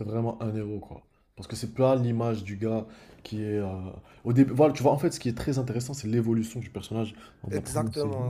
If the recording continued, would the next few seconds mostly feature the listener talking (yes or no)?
yes